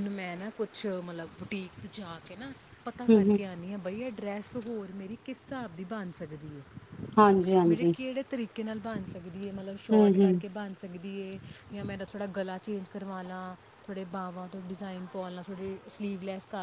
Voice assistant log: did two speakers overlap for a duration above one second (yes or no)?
no